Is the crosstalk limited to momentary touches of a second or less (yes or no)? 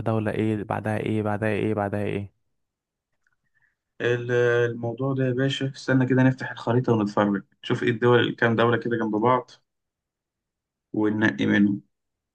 yes